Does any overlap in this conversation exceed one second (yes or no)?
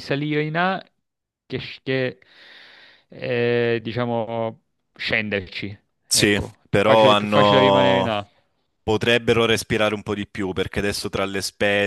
yes